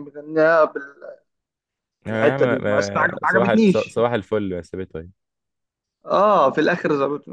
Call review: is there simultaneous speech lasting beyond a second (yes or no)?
yes